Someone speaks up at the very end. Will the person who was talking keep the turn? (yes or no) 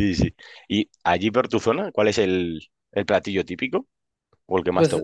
no